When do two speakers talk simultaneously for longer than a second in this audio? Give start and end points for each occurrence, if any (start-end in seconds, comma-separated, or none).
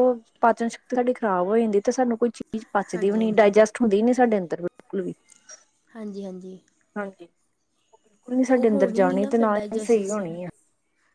8.7-10.2